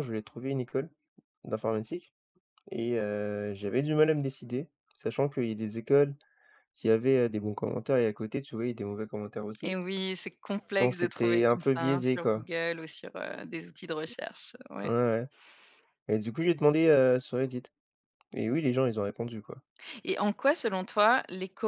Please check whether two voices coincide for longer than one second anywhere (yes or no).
yes